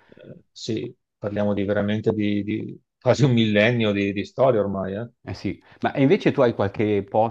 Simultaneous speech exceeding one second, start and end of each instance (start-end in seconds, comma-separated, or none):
none